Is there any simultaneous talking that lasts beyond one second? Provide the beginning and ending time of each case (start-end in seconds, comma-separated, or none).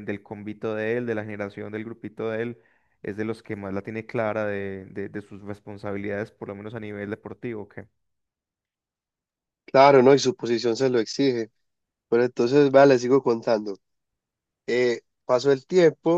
none